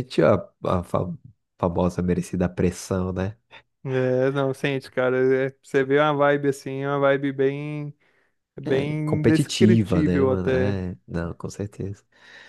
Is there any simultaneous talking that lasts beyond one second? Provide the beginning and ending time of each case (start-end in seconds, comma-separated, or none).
8.7-10.8